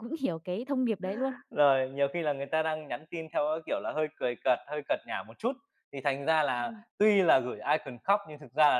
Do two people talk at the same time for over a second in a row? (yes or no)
no